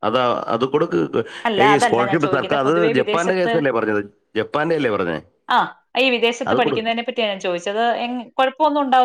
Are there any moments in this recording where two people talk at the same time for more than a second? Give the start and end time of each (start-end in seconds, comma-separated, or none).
1.7-3.5